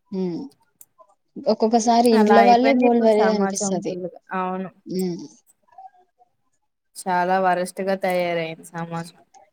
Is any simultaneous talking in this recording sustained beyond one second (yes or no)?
yes